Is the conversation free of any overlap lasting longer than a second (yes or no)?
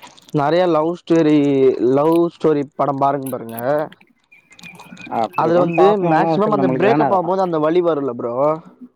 no